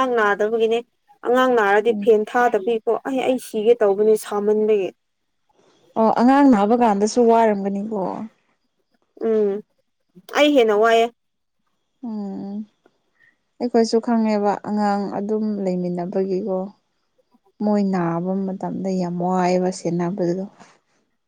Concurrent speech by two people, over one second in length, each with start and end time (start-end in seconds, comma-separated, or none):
none